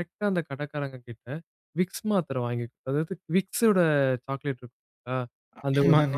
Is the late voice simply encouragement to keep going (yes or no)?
yes